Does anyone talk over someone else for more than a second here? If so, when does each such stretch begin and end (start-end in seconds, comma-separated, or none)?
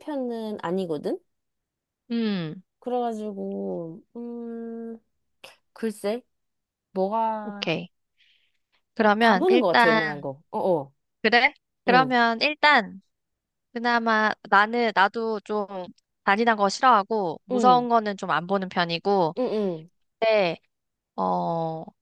9.0-10.3